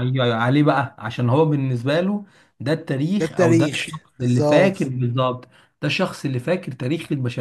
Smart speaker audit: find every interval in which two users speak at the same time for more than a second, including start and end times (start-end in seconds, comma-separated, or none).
3.2-4.8